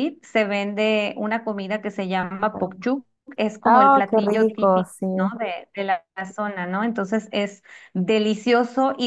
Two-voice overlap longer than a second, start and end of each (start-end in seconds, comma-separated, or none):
3.6-5.1